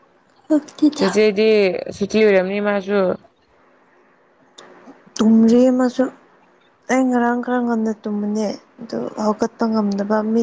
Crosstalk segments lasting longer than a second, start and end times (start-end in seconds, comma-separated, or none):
none